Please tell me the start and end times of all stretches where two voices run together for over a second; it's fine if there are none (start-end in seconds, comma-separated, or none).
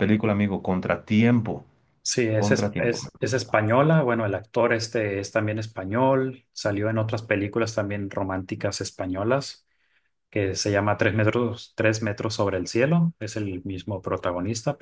2.3-3.6